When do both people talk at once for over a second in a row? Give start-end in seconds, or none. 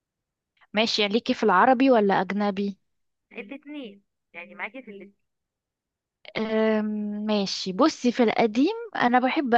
none